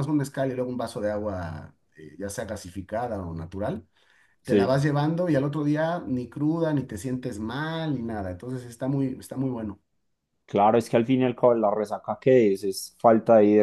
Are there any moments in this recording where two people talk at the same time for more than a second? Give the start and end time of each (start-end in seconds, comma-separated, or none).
none